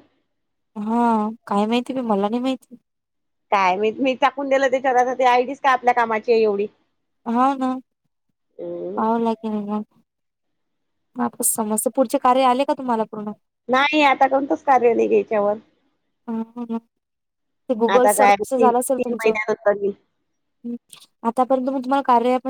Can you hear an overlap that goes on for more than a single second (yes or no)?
yes